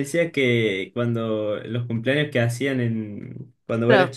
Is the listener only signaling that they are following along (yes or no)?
yes